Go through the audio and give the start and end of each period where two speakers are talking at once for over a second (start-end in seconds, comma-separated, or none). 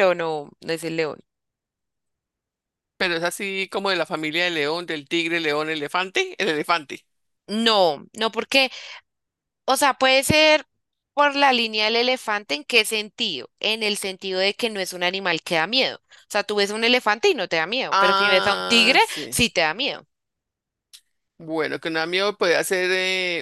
17.9-19.4